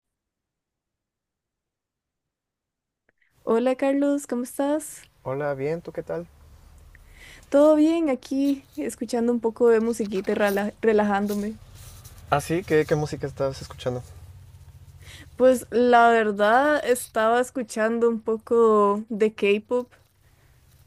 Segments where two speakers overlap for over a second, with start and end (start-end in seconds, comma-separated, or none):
none